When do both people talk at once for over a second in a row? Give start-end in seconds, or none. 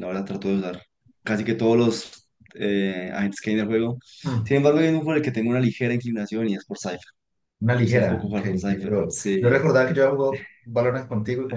7.7-9.6